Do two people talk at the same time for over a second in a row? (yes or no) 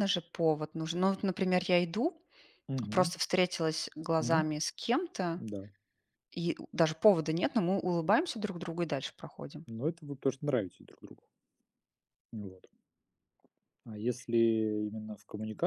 no